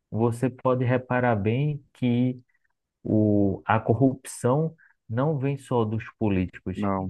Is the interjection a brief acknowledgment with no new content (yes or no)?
yes